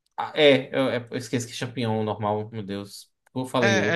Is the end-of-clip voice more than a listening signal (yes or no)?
yes